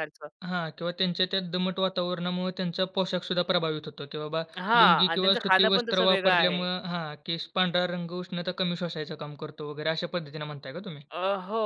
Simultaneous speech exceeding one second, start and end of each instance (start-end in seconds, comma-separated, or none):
4.8-6.6